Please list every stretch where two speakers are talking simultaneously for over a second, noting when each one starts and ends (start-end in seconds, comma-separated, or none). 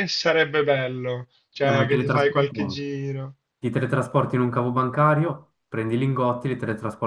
1.6-2.9